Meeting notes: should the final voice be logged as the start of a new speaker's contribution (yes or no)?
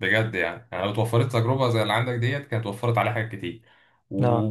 no